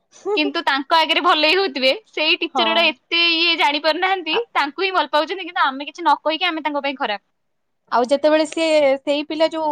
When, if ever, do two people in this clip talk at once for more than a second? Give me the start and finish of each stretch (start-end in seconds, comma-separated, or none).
none